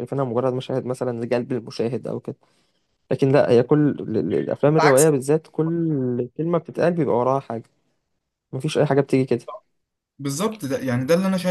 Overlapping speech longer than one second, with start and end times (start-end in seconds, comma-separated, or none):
none